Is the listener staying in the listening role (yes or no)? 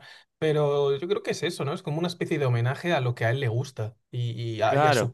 yes